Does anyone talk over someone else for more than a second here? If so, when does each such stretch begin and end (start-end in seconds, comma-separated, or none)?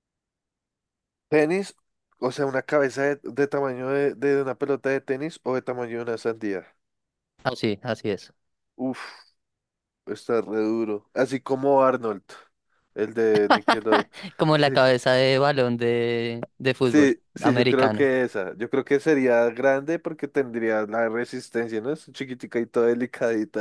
16.8-18.1